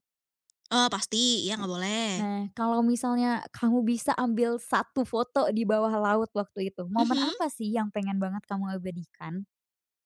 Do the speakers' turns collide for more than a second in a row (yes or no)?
no